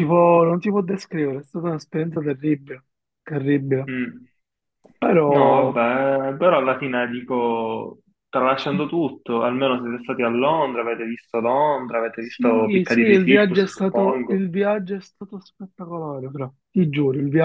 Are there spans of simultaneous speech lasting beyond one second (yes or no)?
yes